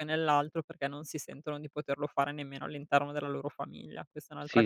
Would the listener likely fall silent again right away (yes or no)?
no